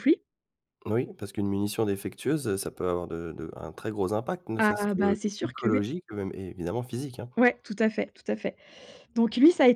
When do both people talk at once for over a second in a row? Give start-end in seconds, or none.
4.6-5.8